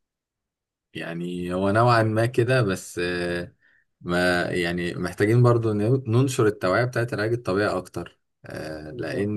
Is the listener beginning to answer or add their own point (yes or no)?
yes